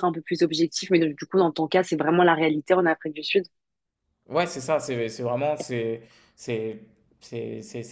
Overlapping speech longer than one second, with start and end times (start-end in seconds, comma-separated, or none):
none